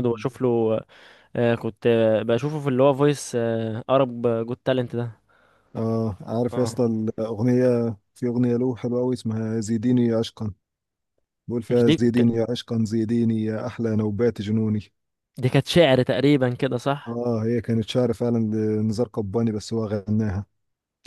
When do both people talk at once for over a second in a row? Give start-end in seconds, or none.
none